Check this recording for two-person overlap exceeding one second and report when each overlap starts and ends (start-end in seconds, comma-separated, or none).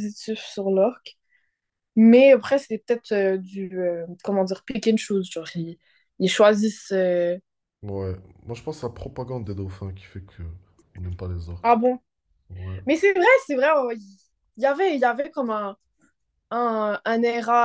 none